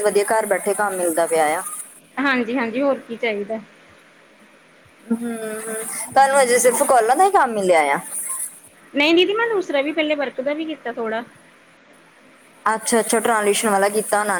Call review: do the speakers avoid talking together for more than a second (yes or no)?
yes